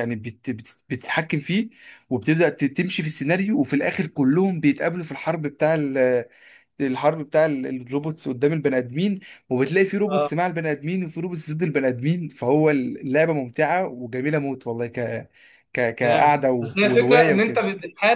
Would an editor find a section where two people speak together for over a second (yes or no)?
yes